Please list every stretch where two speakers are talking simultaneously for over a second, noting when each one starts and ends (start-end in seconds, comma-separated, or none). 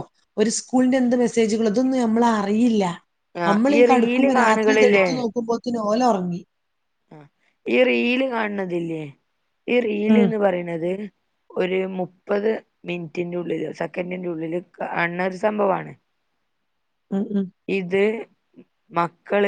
3.5-5.1